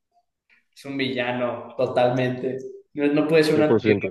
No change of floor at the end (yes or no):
yes